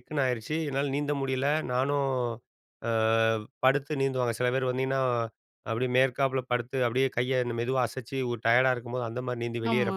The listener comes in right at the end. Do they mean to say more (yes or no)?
no